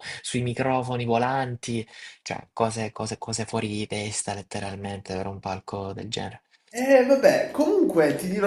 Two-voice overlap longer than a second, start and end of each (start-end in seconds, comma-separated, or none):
none